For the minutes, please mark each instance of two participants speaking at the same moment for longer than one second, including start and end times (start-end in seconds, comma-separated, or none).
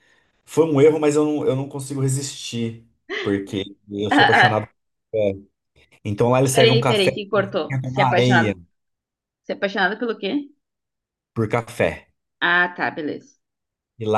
6.5-8.5